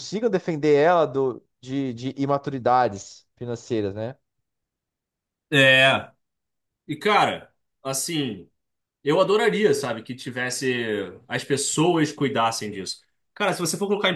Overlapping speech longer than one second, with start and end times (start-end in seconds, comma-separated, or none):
none